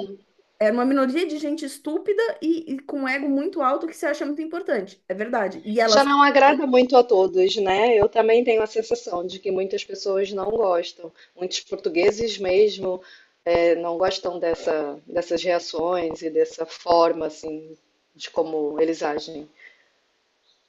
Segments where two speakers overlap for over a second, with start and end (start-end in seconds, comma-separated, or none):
none